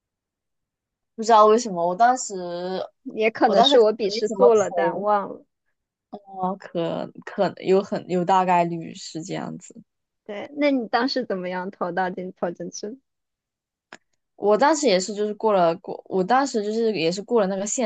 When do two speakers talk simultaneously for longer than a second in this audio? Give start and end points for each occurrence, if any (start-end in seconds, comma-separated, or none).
3.4-5.1